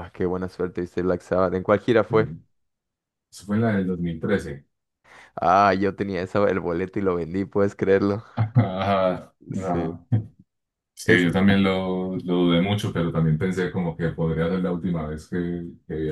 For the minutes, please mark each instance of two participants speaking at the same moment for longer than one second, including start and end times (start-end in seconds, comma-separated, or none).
none